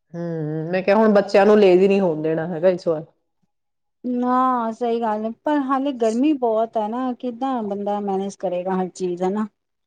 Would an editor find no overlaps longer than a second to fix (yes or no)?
yes